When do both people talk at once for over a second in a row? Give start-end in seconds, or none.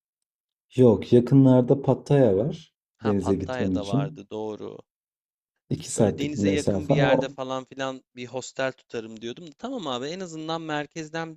3.0-4.2, 6.0-7.4